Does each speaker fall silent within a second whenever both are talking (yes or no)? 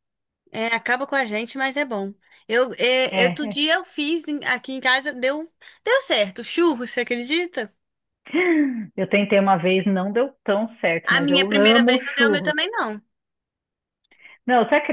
no